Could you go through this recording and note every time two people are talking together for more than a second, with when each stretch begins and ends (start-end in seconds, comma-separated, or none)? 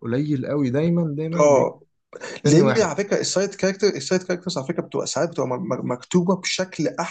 none